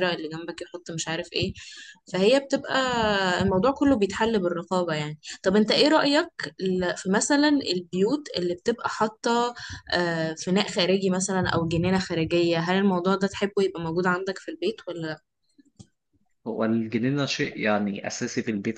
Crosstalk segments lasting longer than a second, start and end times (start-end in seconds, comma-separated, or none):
none